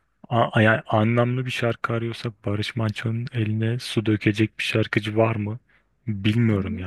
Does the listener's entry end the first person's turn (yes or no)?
yes